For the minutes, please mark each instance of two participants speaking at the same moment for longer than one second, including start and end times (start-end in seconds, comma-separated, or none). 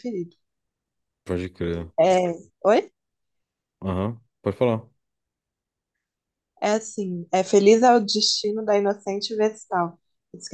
none